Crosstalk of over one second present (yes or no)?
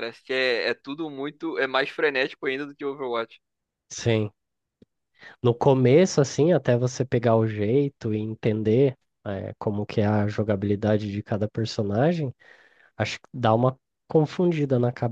no